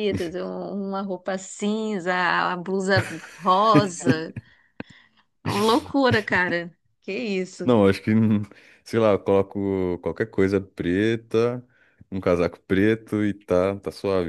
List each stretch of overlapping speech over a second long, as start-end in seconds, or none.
none